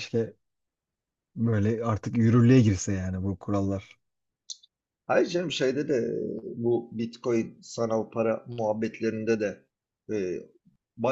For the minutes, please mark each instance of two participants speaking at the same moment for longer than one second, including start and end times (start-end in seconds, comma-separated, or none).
none